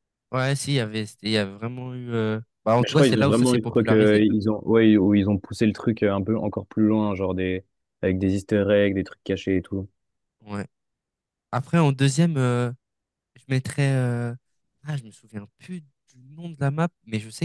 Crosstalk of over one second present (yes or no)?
yes